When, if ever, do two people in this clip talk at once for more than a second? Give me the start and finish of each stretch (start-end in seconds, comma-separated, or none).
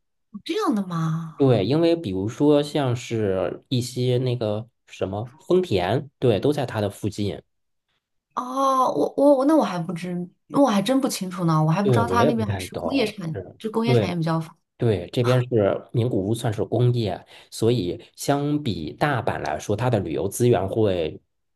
11.8-14.1